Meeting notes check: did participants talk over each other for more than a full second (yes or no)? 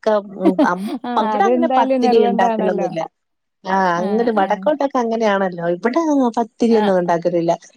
yes